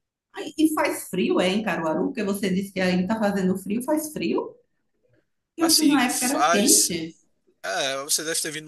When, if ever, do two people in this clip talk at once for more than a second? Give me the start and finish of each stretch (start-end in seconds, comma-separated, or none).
5.6-6.9